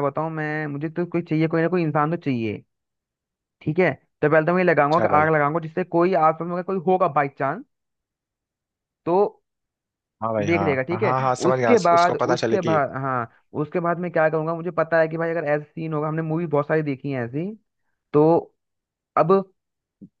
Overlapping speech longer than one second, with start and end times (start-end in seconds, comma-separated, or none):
10.5-12.8